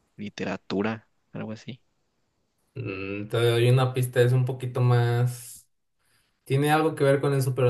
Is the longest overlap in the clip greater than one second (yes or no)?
no